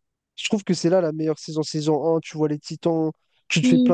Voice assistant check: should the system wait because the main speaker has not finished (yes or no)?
yes